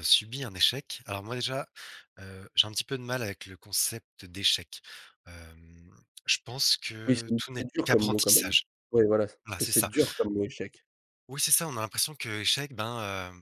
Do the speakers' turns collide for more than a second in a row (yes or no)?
yes